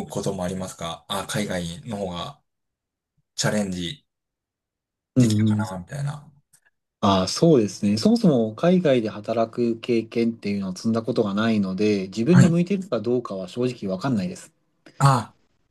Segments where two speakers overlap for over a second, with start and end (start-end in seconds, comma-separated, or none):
none